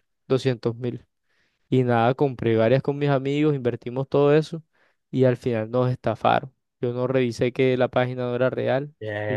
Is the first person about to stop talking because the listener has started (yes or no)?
yes